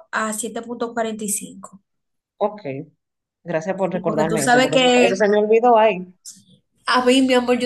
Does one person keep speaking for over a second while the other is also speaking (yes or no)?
yes